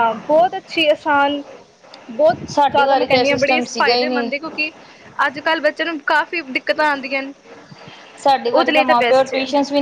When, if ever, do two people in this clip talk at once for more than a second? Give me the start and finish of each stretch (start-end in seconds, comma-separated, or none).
2.5-4.3